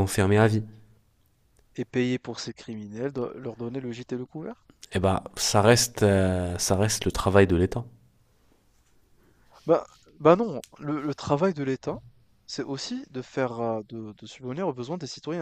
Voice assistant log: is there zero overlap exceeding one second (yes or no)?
yes